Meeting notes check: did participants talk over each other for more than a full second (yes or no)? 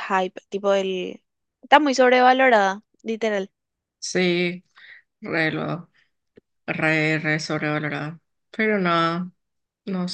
no